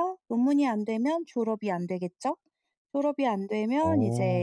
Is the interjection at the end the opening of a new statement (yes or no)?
no